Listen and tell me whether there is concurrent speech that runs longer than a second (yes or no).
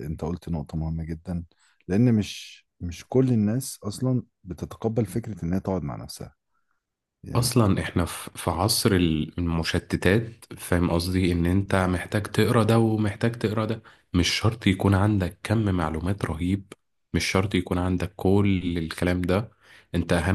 no